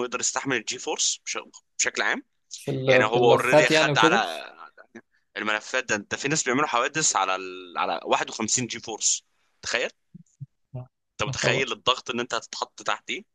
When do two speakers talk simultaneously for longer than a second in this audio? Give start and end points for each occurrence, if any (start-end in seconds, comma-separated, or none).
2.9-4.2